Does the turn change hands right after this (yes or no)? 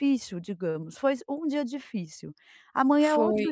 no